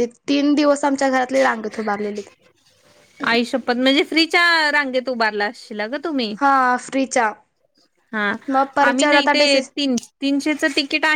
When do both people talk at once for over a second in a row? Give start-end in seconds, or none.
none